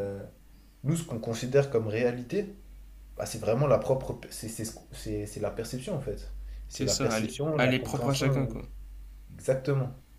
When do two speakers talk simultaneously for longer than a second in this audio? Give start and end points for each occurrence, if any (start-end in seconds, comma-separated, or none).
6.7-8.6